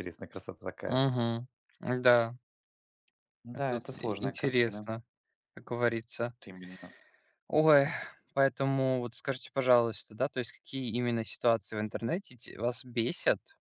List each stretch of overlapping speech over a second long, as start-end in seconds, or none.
3.5-4.9